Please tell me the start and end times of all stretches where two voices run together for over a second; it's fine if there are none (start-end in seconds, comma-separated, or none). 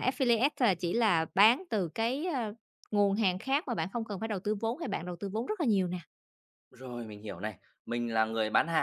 none